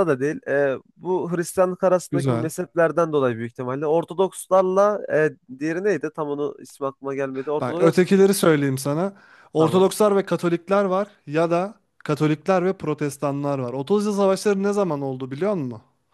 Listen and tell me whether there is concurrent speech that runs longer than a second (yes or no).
no